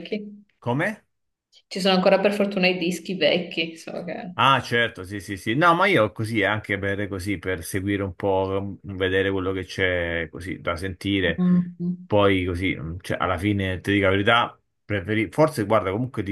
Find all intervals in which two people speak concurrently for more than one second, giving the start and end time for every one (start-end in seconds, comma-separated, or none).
none